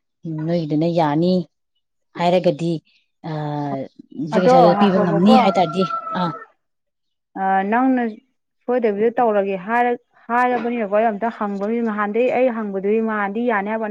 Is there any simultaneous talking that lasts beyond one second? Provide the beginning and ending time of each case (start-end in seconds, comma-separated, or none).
none